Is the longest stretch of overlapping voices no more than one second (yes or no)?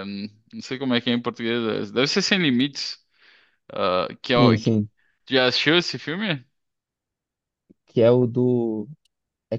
yes